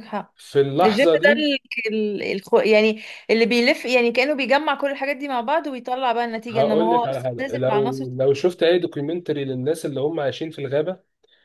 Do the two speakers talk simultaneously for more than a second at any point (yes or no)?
yes